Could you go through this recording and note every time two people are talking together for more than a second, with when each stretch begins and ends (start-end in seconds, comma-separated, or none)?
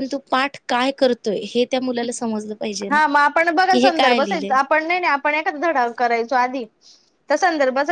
none